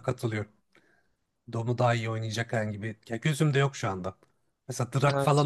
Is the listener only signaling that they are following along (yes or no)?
yes